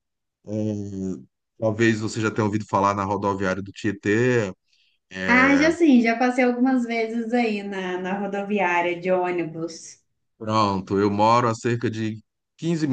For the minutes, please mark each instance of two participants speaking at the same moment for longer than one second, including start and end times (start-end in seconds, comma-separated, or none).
none